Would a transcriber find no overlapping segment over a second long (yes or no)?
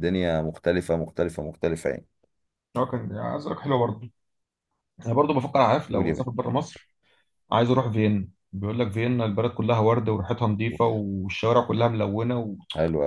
yes